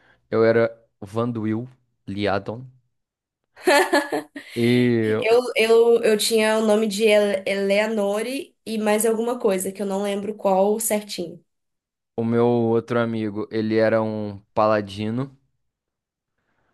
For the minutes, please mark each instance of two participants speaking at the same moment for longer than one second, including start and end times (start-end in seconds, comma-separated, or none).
none